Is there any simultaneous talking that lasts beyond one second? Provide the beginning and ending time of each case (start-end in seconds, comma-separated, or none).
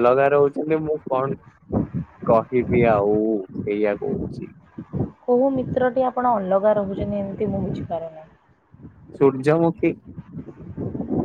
none